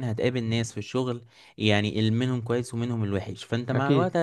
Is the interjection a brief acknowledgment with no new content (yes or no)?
yes